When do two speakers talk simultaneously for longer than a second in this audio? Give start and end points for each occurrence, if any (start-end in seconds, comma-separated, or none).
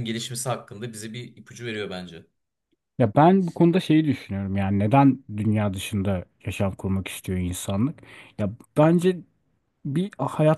none